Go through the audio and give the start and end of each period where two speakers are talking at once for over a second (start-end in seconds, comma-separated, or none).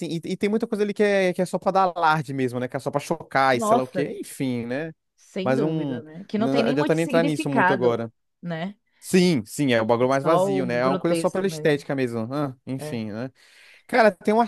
5.4-7.9, 10.1-11.8